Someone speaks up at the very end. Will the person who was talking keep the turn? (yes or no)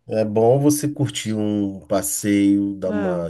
yes